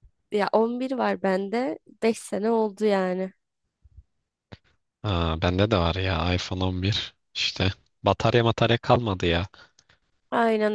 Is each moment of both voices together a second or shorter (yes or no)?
yes